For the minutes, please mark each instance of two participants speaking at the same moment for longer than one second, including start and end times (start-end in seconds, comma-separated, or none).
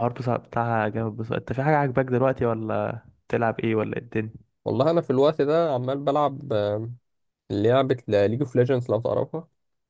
none